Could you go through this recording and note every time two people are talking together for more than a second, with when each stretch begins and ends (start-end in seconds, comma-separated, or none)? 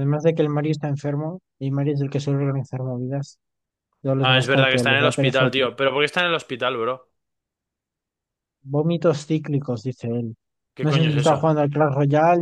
4.2-5.5